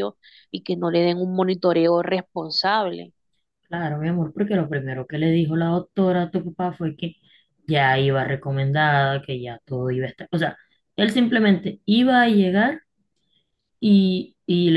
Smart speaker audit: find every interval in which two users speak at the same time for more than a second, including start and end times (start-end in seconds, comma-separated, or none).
none